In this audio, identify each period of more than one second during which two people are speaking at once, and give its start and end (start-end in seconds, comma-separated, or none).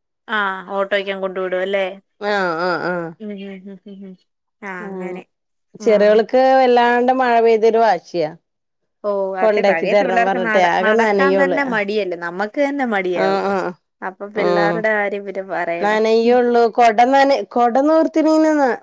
9.4-11.6